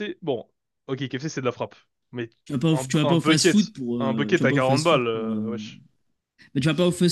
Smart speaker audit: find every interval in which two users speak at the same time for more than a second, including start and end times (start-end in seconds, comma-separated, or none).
2.7-5.6